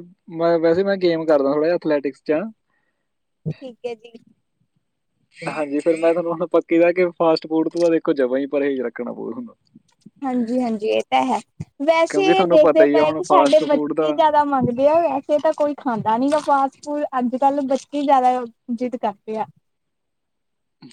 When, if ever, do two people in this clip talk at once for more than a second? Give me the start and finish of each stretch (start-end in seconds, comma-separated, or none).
12.1-14.1